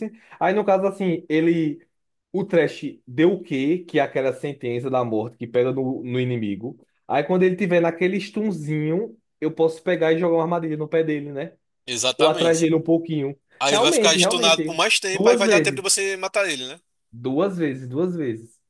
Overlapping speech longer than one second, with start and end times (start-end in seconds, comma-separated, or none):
13.6-15.8